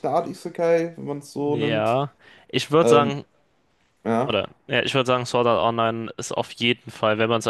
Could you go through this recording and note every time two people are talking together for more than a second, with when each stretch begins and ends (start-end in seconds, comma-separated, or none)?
none